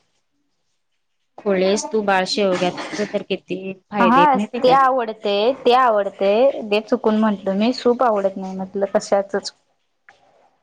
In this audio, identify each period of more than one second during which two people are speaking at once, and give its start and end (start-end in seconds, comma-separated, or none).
none